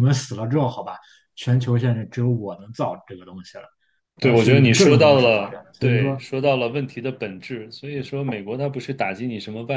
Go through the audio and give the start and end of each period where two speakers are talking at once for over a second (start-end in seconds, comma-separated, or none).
4.2-6.2